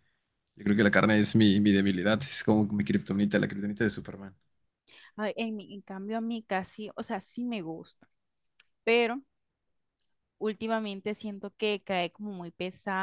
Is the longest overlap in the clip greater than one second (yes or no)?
no